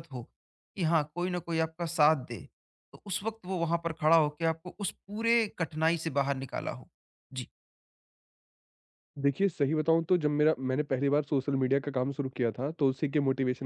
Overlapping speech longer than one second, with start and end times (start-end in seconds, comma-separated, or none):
none